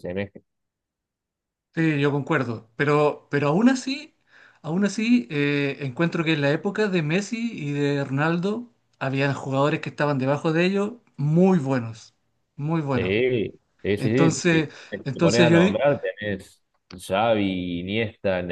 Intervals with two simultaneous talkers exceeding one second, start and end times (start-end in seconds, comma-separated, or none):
14.0-15.8